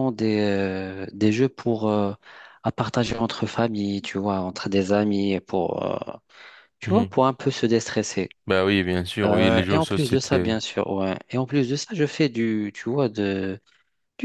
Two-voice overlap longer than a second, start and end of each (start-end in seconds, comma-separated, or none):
9.2-10.6